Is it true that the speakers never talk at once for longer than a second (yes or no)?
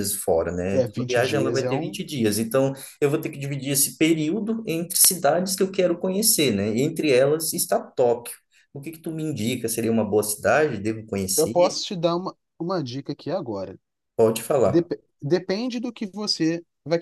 no